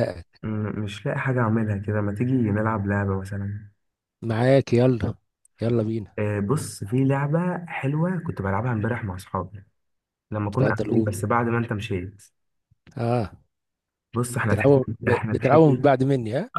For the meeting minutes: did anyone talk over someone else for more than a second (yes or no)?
yes